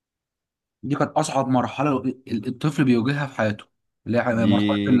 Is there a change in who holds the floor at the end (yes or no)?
yes